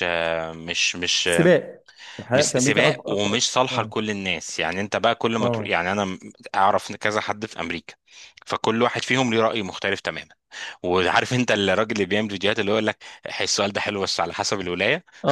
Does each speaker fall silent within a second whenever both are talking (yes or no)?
no